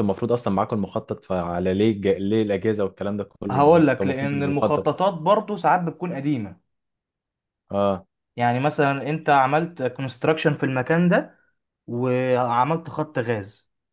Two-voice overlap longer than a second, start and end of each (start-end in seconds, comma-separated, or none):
3.5-4.9